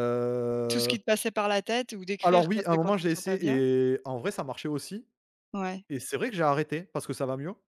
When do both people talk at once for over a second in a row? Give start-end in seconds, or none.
2.2-3.6